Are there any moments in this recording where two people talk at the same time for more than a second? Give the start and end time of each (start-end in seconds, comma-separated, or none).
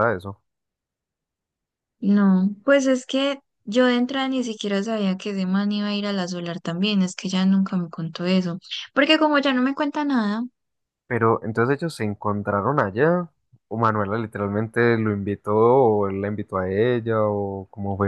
none